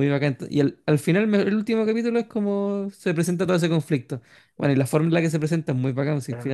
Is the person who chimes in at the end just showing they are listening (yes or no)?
no